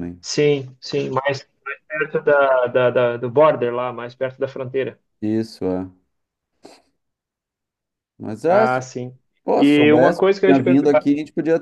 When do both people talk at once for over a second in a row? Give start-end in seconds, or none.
9.6-11.0